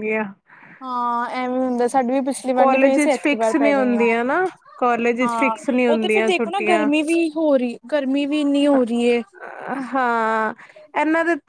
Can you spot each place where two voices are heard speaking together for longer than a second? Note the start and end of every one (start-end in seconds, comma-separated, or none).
2.6-4.1, 5.2-6.9